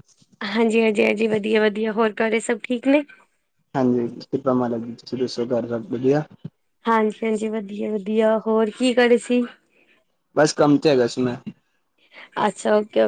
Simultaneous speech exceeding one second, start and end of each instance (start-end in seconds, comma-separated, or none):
none